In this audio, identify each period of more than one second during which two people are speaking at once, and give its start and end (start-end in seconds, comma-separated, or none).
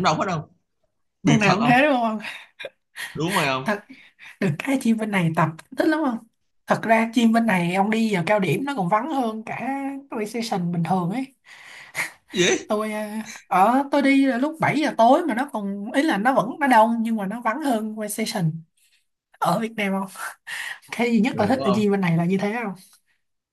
none